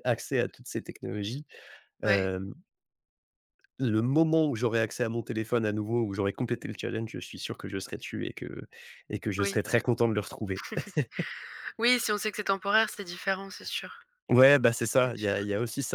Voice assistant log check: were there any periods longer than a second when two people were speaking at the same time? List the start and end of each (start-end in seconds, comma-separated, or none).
none